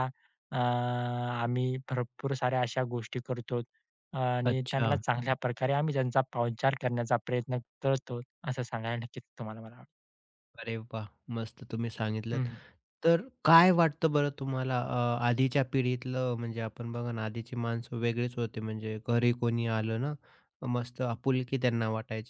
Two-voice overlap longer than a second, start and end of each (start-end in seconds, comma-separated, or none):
none